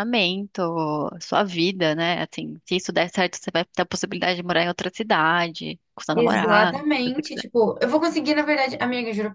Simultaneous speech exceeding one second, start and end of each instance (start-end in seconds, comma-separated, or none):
6.1-7.4